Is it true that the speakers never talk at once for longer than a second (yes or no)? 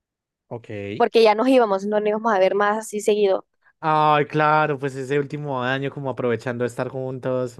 yes